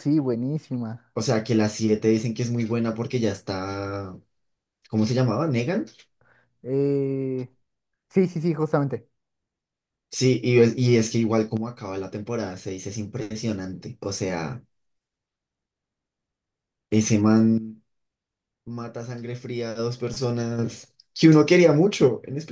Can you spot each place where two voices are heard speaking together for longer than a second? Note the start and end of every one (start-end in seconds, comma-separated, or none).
none